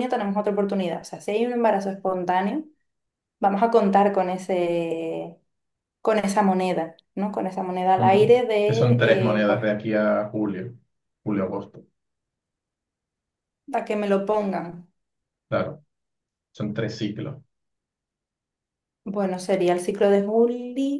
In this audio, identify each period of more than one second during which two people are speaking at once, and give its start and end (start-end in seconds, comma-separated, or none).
8.0-9.6